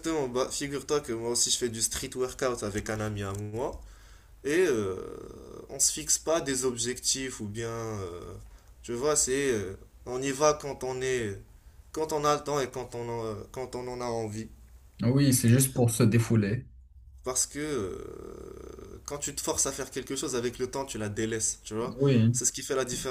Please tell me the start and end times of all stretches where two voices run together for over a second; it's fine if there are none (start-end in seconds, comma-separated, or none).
none